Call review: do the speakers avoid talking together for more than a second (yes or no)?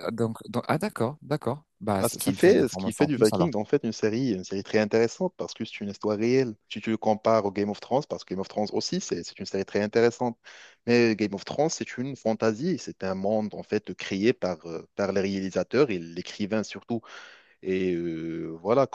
no